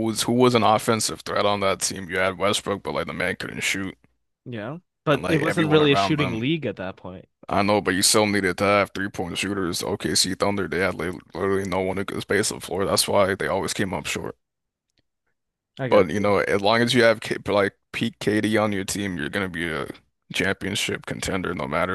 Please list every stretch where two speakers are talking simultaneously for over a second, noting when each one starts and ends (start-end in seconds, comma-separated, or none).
5.1-6.5